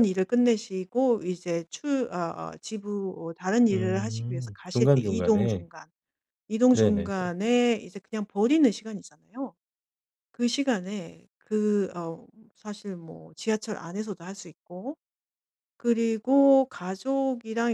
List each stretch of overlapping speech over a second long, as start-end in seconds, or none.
3.7-5.7